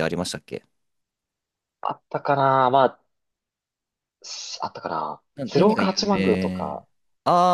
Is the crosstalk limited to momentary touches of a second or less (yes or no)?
no